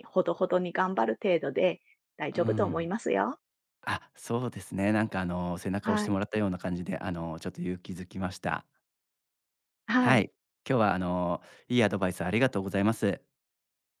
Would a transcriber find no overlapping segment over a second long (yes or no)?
yes